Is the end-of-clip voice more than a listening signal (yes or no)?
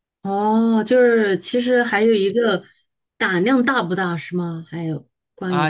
yes